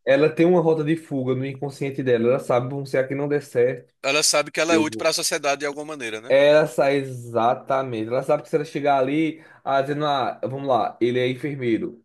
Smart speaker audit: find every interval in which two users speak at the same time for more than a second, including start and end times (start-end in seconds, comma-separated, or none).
none